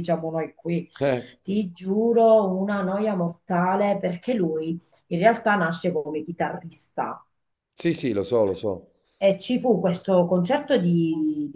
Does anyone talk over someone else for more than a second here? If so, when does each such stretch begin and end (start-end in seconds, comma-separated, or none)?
none